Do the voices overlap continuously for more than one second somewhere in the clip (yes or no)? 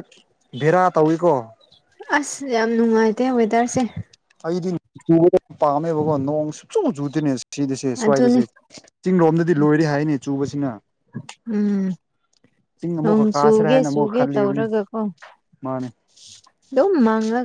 yes